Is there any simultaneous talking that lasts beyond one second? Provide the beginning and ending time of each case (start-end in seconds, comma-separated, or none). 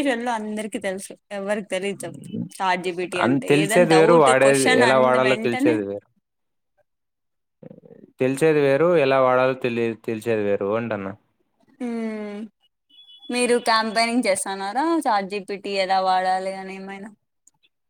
3.2-5.8